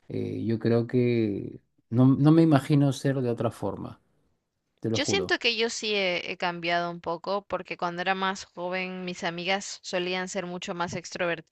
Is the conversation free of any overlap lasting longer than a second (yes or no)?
yes